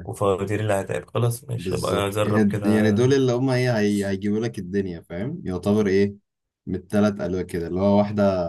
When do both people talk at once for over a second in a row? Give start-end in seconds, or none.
1.6-3.0